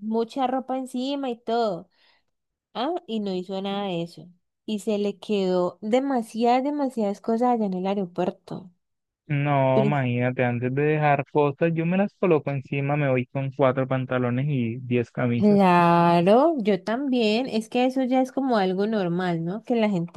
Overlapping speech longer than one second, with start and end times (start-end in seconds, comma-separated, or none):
none